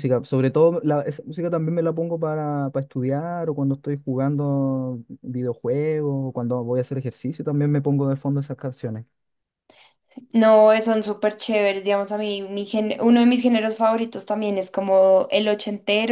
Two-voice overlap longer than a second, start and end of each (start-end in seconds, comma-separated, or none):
none